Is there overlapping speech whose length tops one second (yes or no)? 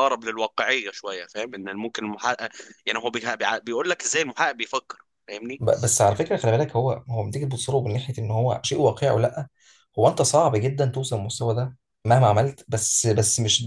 no